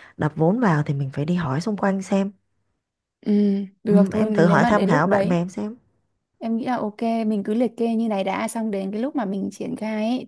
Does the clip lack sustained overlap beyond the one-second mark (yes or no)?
no